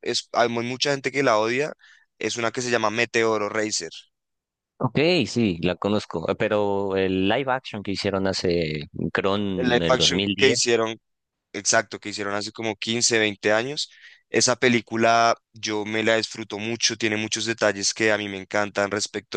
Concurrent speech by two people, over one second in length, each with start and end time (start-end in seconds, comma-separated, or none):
9.6-10.8